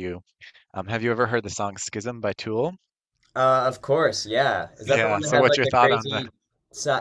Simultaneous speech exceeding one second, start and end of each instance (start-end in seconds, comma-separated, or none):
4.8-6.2